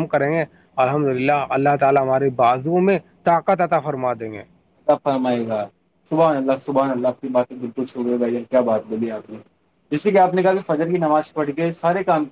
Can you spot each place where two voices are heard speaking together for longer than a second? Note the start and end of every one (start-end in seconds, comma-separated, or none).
none